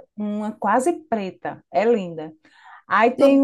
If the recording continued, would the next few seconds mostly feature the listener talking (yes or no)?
no